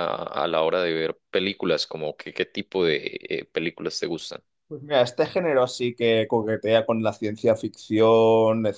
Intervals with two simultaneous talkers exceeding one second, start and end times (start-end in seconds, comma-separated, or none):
none